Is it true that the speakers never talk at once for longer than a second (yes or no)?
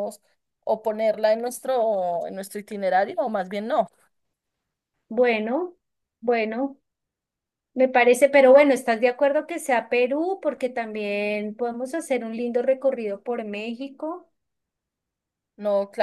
yes